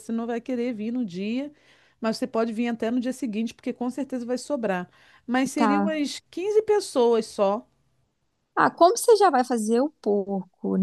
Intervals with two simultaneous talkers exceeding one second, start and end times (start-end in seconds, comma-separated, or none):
none